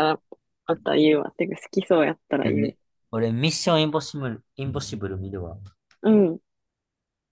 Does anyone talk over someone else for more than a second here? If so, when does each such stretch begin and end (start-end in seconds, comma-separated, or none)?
none